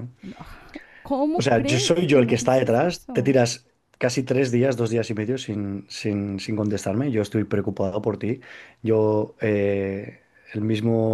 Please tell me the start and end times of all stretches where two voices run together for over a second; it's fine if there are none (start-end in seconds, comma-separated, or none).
1.4-3.4